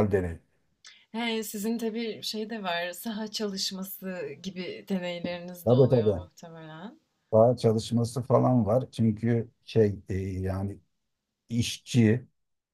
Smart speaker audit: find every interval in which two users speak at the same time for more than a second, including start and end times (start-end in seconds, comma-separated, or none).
none